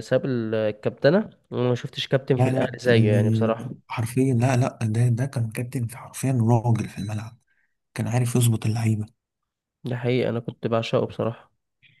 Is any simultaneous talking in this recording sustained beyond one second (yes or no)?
yes